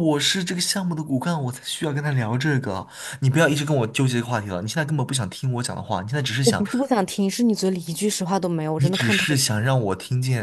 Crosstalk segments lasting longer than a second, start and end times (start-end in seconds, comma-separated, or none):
none